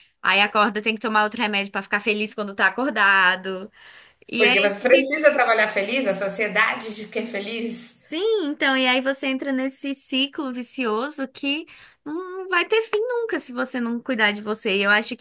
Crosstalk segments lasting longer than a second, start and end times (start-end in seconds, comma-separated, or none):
none